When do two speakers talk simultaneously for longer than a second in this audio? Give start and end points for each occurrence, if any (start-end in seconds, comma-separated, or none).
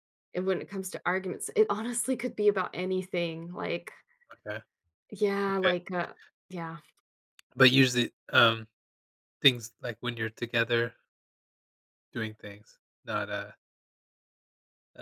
none